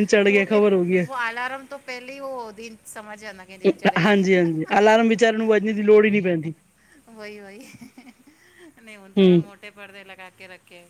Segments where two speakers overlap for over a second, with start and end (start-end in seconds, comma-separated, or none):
none